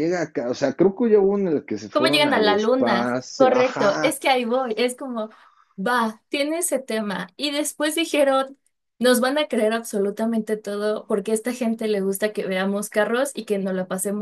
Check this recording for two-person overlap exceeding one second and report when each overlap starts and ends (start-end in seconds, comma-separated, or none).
1.9-4.2